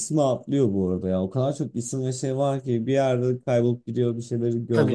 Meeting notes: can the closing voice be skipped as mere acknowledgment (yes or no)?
yes